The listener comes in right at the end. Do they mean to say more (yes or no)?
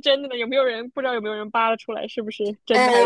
yes